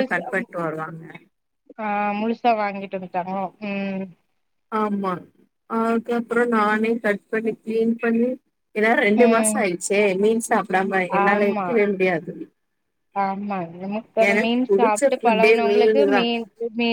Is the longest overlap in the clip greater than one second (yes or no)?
yes